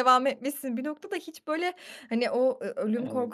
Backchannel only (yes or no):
yes